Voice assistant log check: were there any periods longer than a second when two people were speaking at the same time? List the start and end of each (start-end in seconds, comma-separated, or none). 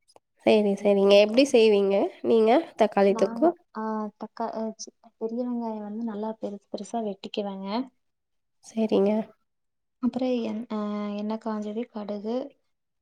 none